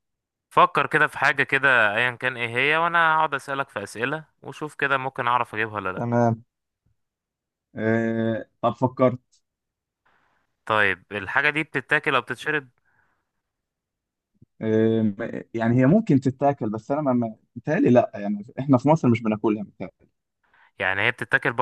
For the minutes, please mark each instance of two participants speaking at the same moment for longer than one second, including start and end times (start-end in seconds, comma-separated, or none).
none